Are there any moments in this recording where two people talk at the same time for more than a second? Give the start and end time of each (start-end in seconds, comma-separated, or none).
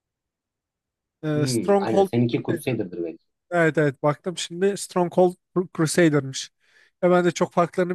1.3-2.7